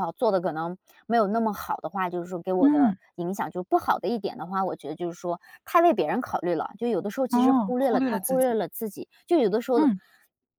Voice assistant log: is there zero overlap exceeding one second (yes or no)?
no